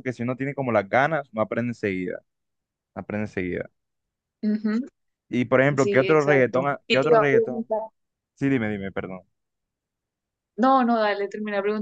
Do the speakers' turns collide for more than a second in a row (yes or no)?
yes